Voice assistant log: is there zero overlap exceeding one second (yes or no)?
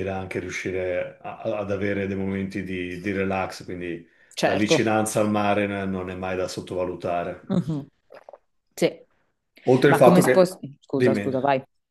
no